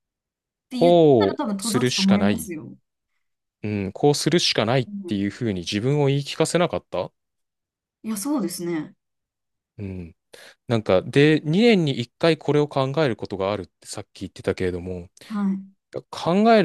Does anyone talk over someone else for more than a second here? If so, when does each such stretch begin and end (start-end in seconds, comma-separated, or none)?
0.7-2.5